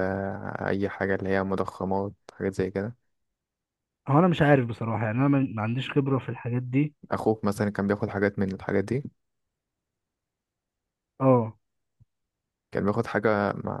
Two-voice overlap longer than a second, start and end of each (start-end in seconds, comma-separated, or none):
none